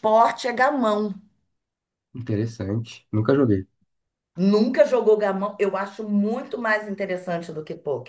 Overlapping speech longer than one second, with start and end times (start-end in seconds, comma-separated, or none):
none